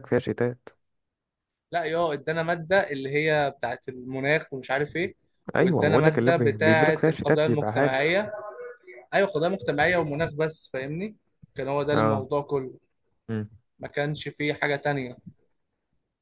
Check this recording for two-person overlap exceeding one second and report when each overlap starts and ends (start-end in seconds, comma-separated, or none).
5.6-8.2